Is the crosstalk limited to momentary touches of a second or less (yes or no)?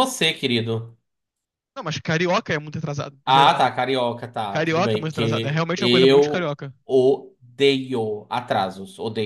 no